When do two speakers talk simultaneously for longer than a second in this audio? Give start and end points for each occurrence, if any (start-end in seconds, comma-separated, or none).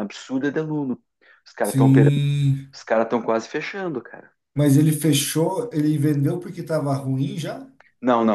none